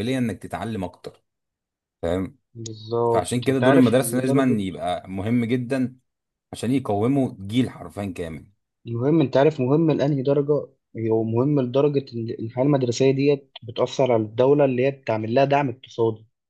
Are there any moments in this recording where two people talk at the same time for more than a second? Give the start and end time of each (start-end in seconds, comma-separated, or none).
3.1-4.6